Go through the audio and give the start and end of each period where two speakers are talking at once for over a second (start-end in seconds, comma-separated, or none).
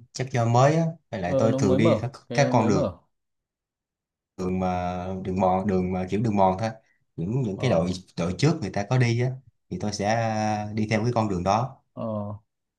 1.2-2.9